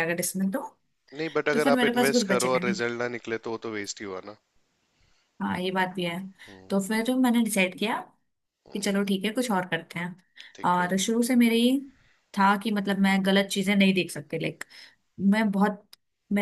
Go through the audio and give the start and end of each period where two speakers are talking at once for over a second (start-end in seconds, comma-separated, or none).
1.5-2.8